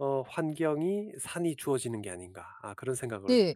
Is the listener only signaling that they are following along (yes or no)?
no